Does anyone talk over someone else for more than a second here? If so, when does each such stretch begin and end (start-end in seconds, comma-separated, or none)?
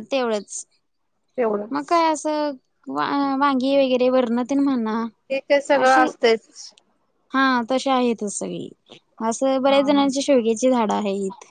none